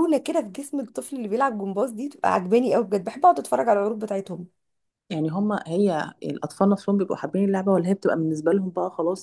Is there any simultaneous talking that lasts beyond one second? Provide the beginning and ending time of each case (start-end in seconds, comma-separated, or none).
none